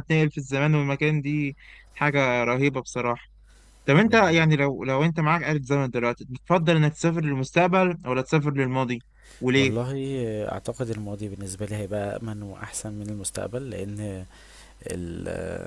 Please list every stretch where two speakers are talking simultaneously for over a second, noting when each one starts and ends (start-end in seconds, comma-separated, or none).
none